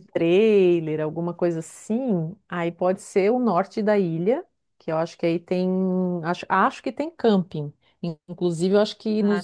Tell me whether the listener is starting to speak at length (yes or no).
no